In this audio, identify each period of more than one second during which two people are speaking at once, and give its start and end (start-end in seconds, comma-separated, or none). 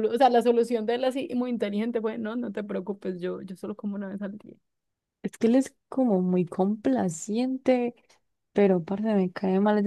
none